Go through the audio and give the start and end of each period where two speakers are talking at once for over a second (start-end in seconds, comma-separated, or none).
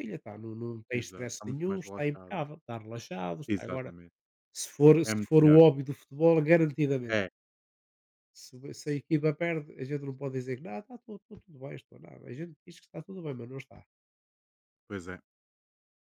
0.9-2.4